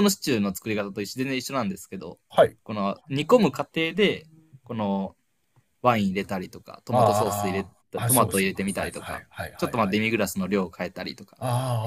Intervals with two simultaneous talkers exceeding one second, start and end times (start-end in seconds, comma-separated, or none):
6.9-10.0